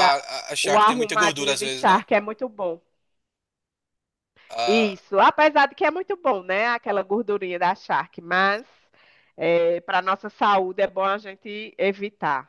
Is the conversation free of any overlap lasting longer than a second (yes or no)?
no